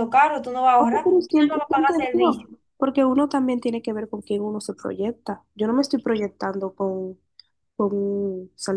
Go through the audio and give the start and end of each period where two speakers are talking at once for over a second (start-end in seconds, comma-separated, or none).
0.8-2.5